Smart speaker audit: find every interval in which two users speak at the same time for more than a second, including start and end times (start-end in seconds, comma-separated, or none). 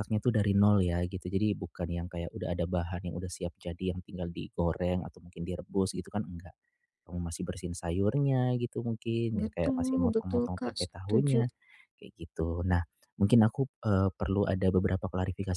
9.3-11.4